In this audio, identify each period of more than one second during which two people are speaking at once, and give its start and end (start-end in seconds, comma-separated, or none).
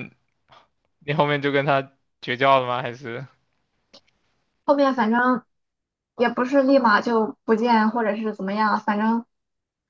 none